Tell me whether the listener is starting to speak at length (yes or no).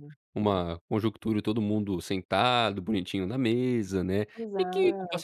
no